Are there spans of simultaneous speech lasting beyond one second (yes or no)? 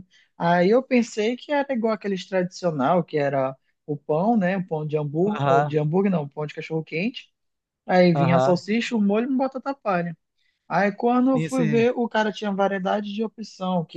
no